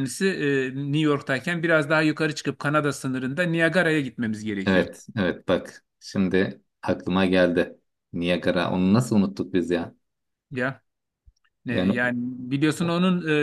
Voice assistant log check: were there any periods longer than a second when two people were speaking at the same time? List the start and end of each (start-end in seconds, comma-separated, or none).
none